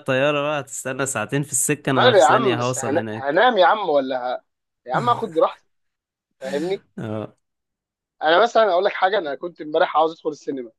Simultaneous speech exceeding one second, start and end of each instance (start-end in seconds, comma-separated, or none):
1.8-3.4